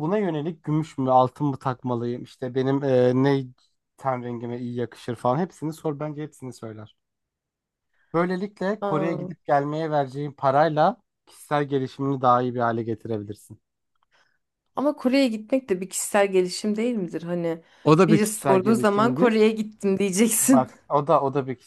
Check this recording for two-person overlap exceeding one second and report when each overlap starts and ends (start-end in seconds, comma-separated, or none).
18.1-19.4